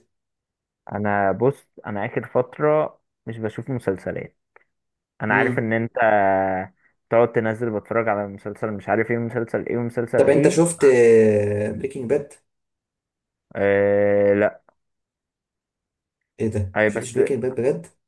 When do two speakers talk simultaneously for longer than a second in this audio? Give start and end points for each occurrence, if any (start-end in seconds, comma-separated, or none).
none